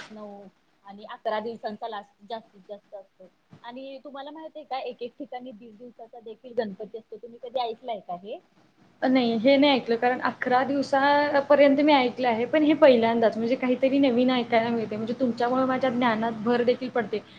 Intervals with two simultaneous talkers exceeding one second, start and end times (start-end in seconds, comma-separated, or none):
none